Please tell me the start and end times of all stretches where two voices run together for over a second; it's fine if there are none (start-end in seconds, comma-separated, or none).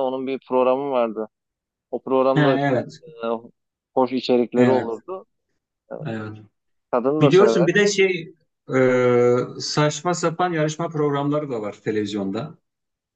none